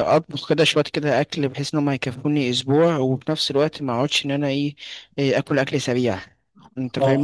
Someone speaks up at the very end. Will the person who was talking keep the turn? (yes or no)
no